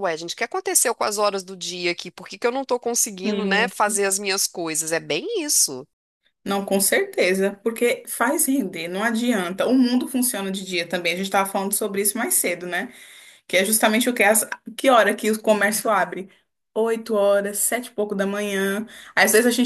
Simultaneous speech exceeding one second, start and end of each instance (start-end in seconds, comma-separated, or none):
none